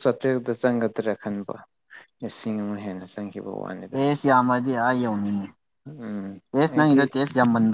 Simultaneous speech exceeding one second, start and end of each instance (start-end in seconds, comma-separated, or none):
none